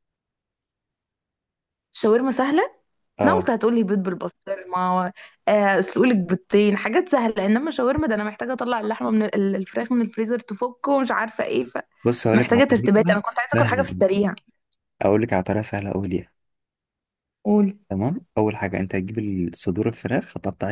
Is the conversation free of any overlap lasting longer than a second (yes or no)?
no